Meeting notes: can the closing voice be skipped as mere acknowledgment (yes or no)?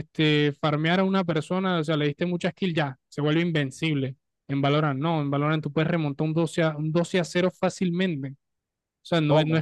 yes